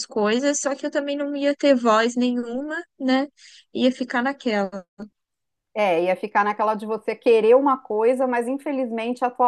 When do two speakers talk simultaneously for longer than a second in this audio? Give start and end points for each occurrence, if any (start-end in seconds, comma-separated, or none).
none